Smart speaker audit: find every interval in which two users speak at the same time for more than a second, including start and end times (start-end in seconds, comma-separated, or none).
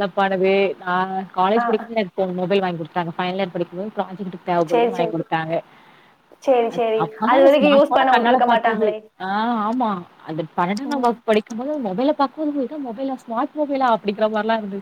6.8-8.9